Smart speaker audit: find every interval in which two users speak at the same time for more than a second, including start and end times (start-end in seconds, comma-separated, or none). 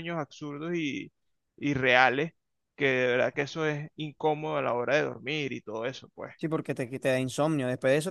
none